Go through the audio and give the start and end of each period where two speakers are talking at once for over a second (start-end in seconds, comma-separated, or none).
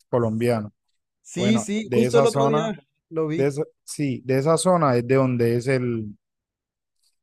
1.3-2.7